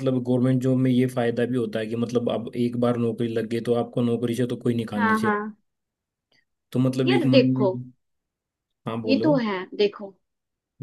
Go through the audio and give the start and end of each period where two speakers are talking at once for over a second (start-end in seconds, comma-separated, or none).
none